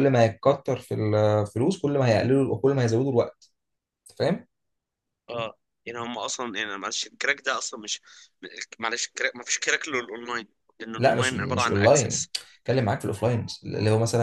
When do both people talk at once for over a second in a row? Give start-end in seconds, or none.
11.0-12.3